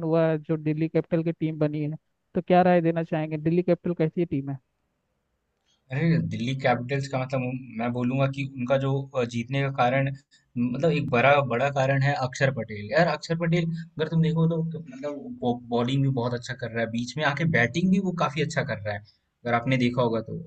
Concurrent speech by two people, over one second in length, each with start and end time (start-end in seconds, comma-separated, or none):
none